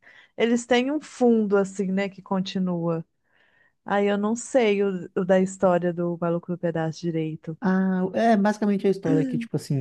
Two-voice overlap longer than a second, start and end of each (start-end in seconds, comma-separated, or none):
none